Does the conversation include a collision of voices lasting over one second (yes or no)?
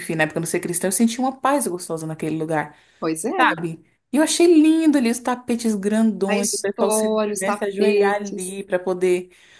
yes